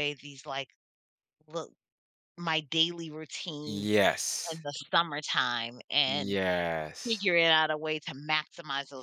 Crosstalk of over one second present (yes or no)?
no